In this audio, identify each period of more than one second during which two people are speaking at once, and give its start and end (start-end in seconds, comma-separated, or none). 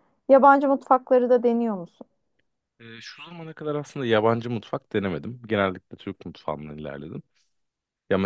none